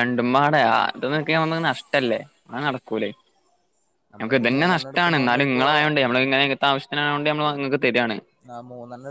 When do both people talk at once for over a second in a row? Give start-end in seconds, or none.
4.2-5.7